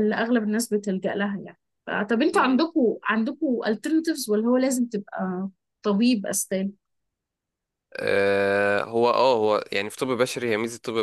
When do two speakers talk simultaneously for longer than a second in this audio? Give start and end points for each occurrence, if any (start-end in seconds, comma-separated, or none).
none